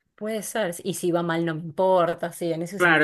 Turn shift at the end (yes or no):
yes